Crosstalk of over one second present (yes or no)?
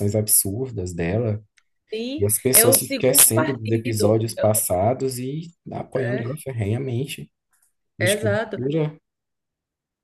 yes